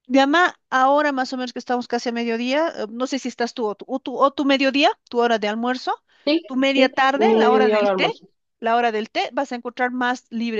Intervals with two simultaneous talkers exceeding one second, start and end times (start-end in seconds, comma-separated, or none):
6.5-8.1